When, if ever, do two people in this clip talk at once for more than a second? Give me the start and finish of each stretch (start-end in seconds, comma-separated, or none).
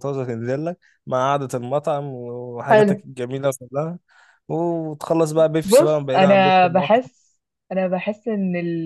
5.6-7.1